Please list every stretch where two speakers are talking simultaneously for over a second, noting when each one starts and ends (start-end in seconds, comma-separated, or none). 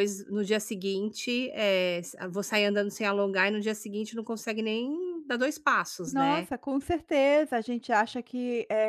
none